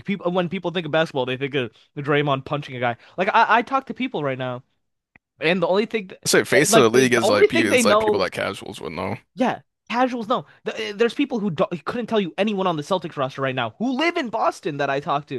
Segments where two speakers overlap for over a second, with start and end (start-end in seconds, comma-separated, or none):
6.5-8.3